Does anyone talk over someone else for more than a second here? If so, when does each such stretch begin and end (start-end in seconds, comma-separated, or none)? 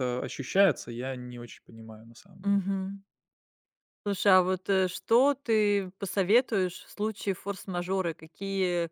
none